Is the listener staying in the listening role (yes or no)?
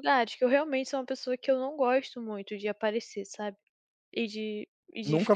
yes